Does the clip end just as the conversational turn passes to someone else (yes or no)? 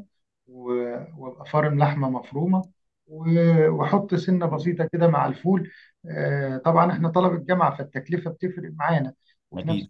no